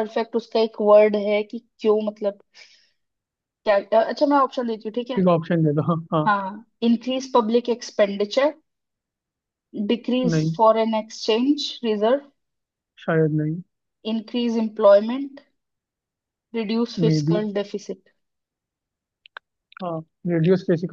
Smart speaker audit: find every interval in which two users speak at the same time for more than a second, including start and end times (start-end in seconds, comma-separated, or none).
none